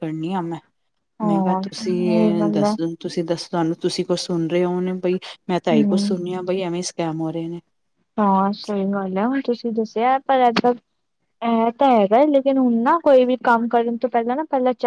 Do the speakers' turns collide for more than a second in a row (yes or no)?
yes